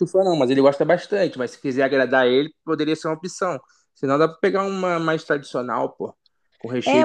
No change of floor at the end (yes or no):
no